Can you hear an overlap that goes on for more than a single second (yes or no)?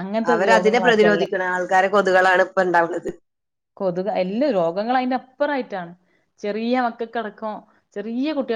no